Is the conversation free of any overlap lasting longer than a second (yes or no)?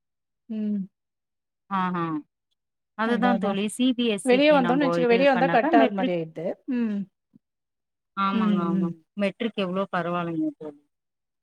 no